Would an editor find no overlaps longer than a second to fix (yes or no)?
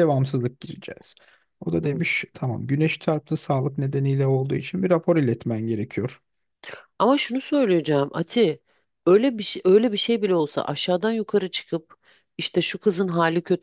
yes